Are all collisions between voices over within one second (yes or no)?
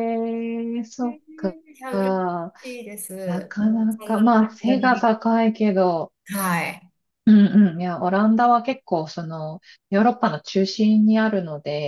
no